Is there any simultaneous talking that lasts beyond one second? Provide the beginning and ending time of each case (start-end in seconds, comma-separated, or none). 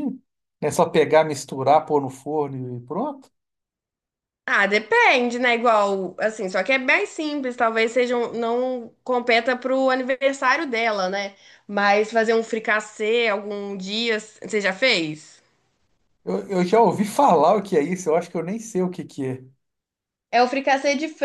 none